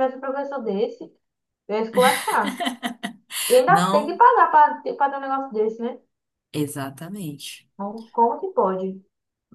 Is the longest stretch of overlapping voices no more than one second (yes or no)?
yes